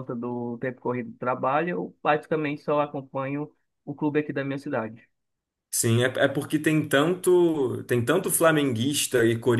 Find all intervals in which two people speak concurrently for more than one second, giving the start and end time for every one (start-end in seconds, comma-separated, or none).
none